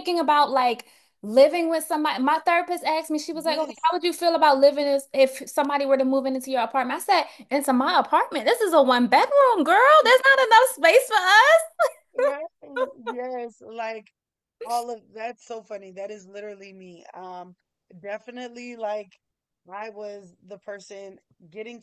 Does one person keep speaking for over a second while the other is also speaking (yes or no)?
no